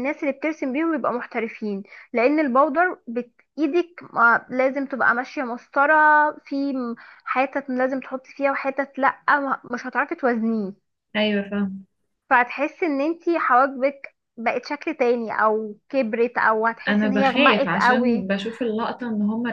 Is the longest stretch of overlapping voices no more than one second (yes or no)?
no